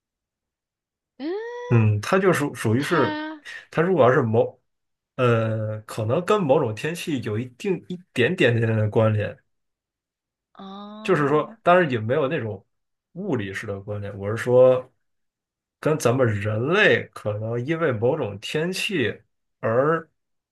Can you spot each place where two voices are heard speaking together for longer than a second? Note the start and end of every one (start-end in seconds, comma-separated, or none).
none